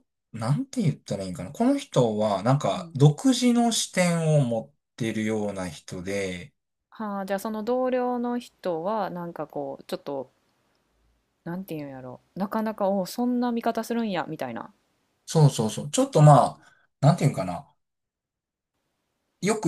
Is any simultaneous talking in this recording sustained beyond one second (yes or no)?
no